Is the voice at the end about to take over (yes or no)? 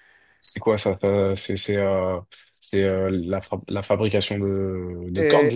yes